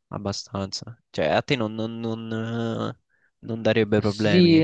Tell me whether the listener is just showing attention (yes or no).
no